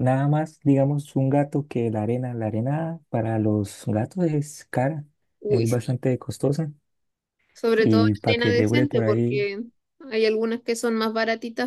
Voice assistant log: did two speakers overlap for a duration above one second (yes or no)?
yes